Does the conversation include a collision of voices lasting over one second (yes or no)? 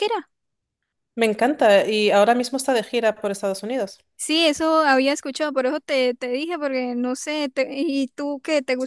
no